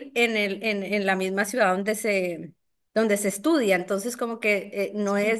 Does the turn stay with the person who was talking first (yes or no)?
yes